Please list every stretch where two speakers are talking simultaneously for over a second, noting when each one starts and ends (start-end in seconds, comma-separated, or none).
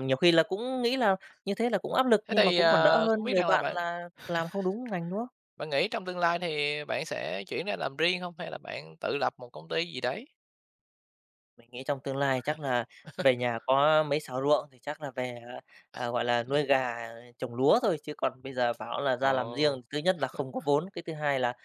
2.3-3.8